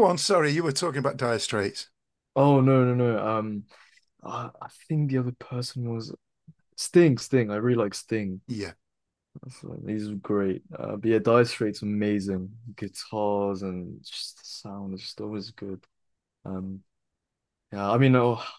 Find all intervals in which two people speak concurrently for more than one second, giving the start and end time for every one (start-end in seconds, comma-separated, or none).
none